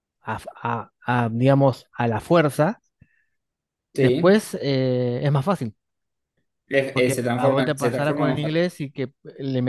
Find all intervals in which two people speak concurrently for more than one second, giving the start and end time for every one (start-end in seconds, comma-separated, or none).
6.9-8.6